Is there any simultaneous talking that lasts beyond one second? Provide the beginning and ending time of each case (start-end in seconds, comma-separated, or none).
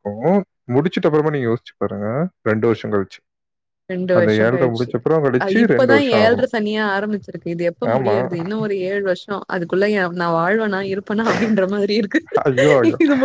none